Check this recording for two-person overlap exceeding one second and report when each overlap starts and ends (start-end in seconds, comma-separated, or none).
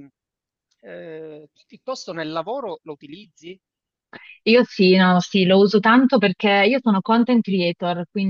none